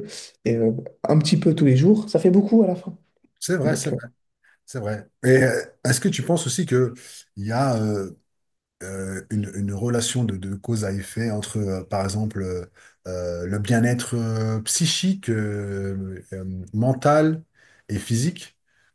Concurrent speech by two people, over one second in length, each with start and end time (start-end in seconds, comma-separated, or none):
none